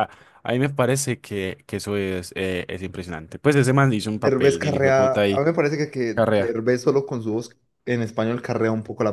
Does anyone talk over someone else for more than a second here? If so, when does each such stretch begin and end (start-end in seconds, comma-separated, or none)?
4.1-5.4